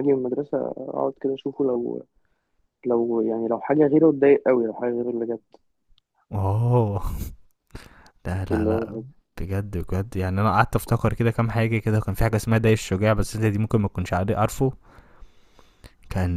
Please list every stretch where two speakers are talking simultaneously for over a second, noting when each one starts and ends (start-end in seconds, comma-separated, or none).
none